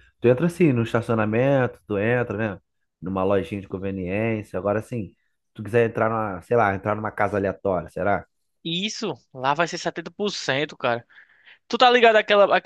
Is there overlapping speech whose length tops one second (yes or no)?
no